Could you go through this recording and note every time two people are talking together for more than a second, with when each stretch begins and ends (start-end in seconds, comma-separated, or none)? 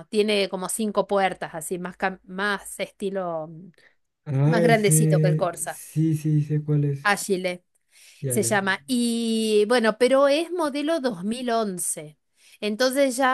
4.5-5.8